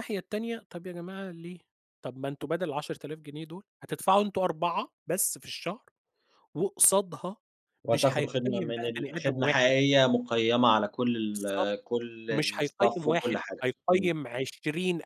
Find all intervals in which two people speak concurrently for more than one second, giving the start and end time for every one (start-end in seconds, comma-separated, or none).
7.9-9.7, 12.6-14.2